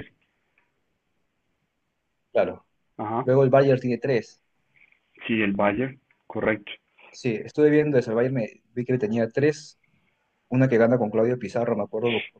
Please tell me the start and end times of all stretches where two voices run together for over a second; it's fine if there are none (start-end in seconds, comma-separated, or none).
none